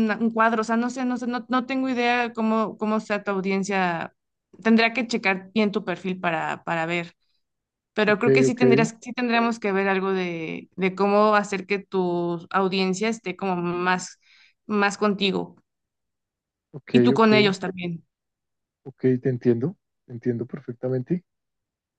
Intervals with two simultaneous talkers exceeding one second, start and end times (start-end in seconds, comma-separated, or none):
none